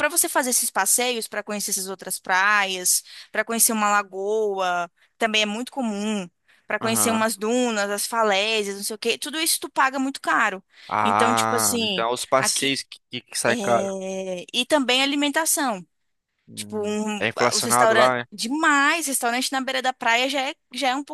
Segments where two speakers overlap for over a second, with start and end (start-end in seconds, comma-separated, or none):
11.0-12.7, 16.5-18.2